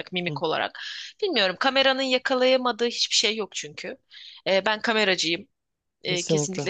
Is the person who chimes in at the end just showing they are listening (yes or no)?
no